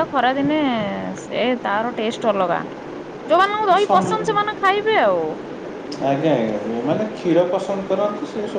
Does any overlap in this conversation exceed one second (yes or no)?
no